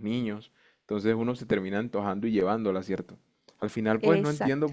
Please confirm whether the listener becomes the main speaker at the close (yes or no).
no